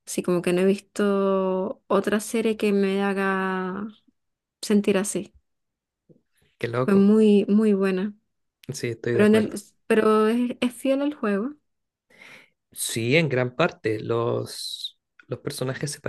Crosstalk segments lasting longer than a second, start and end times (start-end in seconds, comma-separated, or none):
none